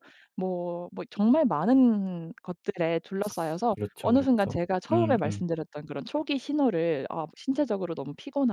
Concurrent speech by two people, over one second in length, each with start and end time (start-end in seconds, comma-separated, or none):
3.7-5.5